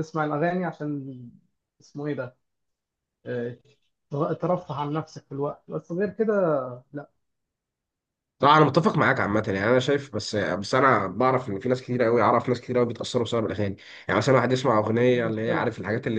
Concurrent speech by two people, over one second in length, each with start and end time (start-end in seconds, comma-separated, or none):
none